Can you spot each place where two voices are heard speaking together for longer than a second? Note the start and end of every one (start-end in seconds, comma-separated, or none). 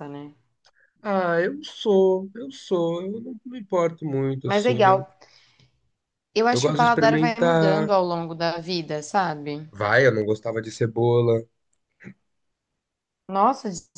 6.5-7.9